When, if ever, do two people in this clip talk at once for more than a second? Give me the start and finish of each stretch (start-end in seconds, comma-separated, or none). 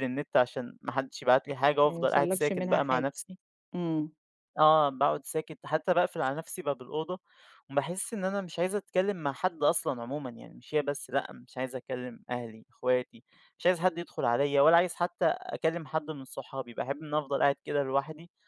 1.8-3.0